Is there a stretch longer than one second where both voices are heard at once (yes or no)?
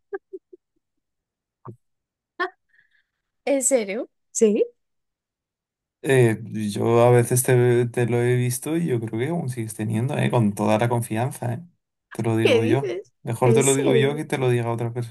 yes